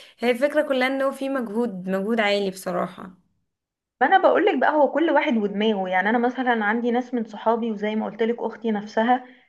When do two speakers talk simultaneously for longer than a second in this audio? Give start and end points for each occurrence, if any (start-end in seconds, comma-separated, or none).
none